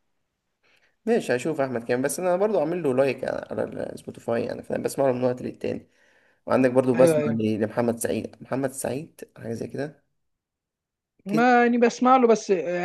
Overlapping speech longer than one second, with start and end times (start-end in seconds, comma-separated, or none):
none